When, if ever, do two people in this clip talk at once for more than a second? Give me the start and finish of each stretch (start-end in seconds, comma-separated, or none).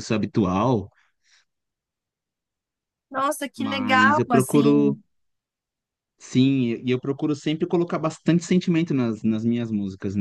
3.6-5.0